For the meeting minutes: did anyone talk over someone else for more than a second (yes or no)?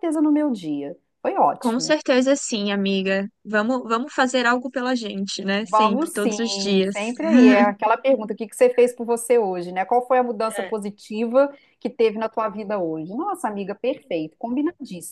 yes